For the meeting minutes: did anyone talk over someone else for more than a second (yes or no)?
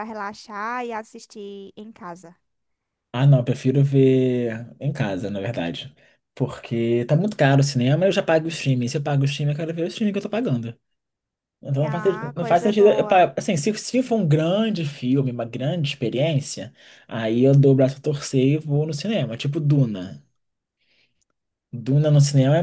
yes